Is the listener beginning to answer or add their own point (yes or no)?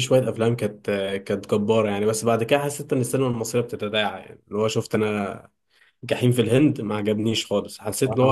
no